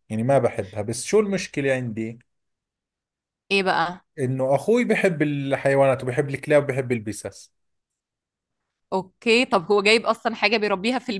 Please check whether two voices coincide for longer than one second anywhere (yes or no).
no